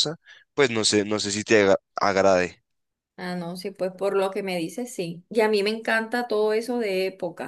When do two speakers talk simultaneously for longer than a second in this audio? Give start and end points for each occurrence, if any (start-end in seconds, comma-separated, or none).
none